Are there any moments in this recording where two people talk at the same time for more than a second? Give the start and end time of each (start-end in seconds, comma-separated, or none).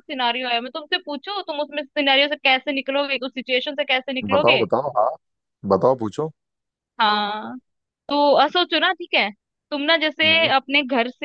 none